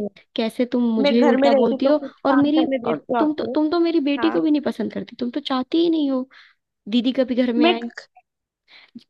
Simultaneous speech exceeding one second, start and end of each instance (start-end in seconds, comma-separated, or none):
1.0-3.5